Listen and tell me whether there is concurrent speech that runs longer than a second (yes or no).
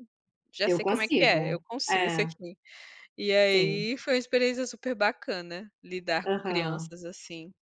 yes